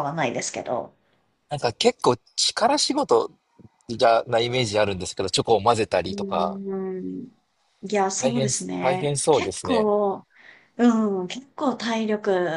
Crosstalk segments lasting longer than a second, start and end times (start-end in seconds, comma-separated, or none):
8.2-9.9